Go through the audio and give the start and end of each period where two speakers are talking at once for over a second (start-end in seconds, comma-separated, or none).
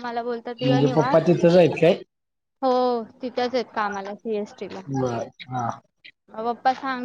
none